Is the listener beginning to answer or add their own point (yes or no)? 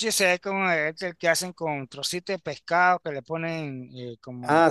yes